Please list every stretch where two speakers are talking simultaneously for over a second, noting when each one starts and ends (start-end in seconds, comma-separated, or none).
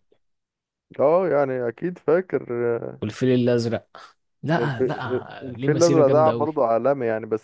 4.6-6.5